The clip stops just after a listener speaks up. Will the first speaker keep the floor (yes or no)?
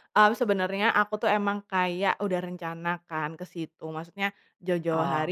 yes